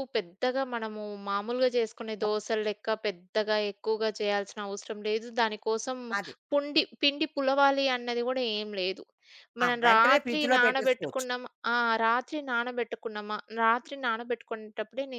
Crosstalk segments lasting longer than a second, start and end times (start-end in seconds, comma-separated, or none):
9.7-11.3